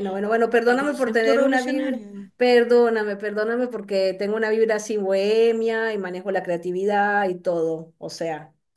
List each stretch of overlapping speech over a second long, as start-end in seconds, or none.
0.7-2.0